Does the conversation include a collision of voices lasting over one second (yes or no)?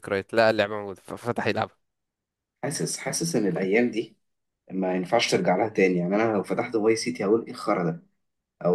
no